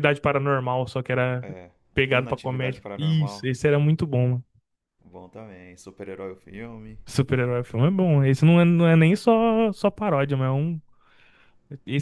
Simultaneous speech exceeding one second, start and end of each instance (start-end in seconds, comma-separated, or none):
2.1-3.5